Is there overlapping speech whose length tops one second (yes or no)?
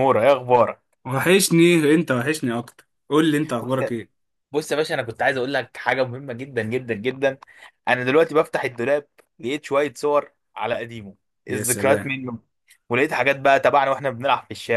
no